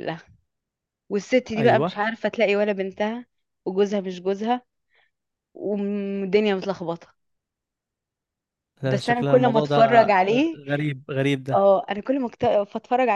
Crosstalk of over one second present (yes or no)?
yes